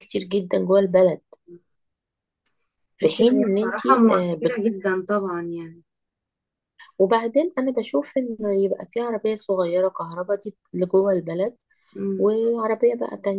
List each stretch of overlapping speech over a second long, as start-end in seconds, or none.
3.0-4.6